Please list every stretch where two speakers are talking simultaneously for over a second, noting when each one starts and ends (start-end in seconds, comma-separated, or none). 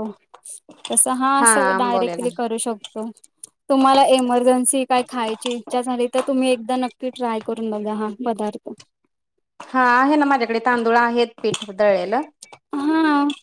none